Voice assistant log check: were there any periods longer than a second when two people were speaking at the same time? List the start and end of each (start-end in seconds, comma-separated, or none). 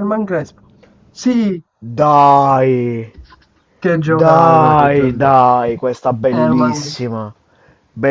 4.0-5.3